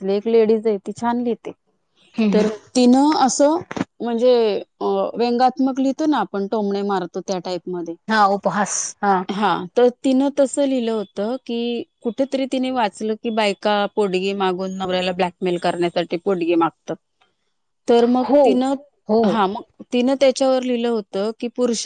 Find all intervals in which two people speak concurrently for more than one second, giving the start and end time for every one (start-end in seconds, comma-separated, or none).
none